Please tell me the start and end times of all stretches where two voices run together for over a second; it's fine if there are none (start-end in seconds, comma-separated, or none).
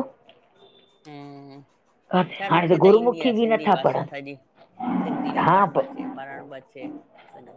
2.2-4.2